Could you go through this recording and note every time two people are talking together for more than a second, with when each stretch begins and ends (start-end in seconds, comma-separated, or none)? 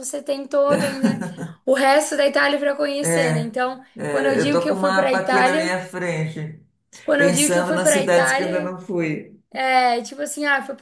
4.0-5.8, 7.2-8.7